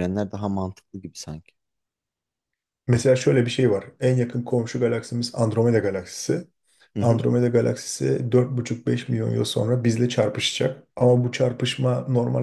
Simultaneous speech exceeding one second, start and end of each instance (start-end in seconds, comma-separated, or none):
none